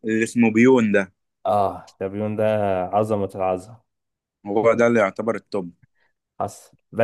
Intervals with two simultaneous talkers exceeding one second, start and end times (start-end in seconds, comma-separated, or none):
none